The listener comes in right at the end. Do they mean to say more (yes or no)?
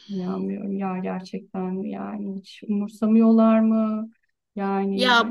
yes